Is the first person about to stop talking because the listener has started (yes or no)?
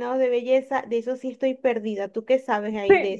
yes